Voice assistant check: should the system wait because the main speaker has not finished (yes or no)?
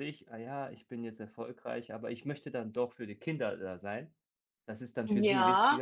no